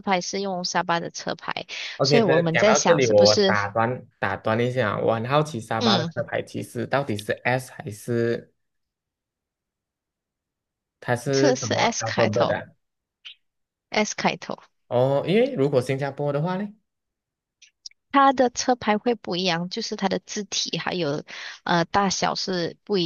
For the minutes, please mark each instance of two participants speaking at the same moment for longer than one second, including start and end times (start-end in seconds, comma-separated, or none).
2.0-3.5, 11.3-12.6